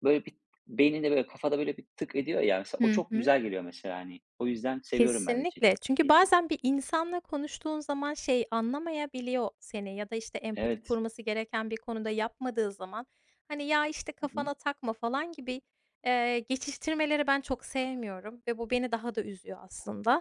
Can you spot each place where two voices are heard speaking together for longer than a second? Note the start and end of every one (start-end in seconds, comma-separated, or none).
4.9-6.2